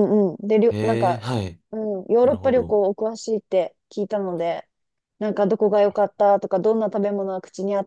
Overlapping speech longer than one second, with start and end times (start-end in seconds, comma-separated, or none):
none